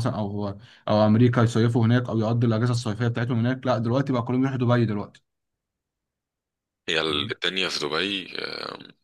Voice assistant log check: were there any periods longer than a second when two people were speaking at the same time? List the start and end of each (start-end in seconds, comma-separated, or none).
none